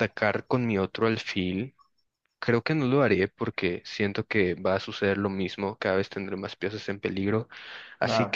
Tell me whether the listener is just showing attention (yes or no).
yes